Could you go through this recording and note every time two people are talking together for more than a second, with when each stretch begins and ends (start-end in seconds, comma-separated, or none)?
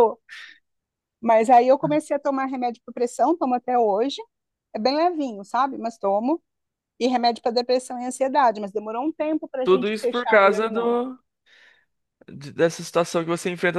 9.6-11.0